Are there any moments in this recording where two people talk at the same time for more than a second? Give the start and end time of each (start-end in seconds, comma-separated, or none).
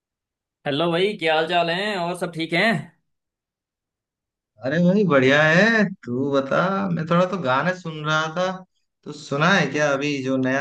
none